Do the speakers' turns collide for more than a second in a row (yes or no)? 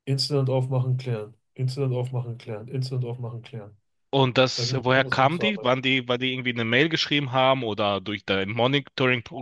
yes